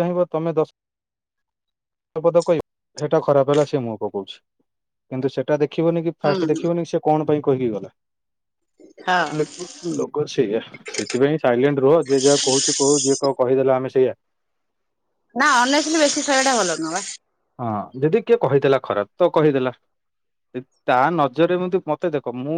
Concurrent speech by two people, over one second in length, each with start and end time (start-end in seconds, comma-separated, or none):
none